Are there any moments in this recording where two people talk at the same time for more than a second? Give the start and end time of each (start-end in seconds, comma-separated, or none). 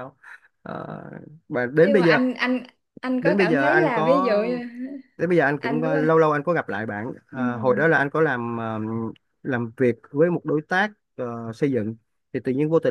3.2-4.4